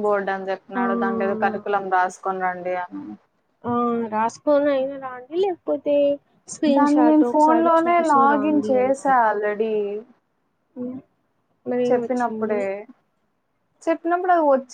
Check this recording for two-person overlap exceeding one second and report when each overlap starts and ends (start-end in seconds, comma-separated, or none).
6.8-9.2